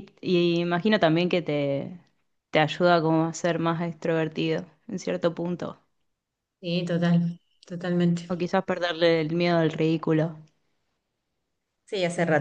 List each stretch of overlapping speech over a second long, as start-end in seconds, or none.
none